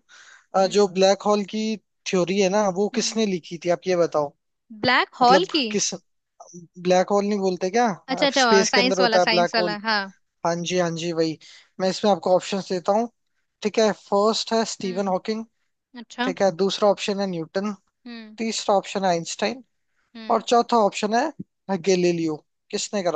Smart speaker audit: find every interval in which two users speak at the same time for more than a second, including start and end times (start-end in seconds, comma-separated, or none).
8.4-9.8